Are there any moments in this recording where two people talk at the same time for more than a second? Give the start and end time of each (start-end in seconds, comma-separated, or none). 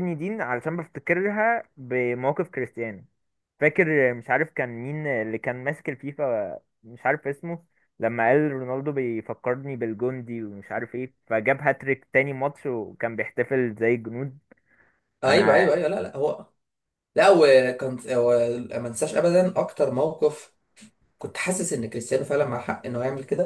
none